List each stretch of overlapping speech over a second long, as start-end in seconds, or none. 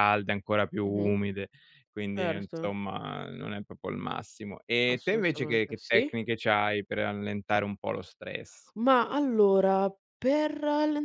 4.9-6.2